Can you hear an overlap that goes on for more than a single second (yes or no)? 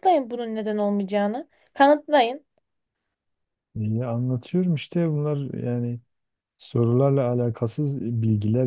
no